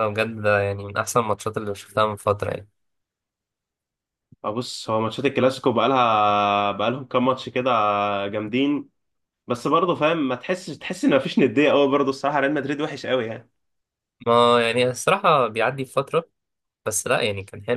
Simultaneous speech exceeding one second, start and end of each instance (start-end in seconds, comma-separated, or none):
none